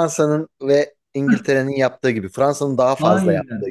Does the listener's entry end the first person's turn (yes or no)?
yes